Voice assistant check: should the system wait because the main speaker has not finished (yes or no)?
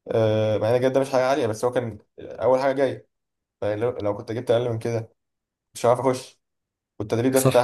yes